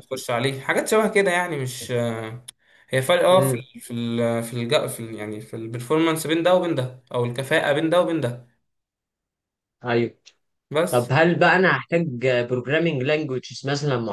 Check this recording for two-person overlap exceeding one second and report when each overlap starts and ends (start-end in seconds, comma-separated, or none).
none